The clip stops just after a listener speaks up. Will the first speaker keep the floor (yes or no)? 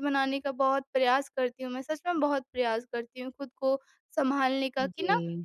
yes